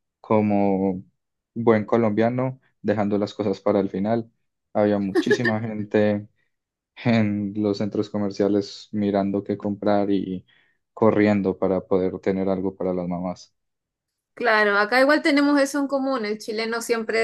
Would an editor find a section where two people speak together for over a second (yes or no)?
no